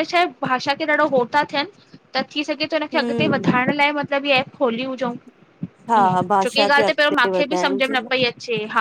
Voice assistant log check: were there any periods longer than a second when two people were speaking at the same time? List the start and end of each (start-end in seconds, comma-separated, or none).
6.0-8.1